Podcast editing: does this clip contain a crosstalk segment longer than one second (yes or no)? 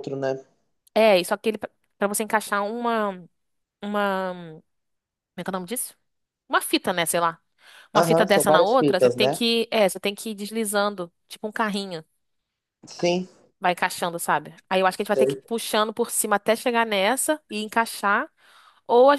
yes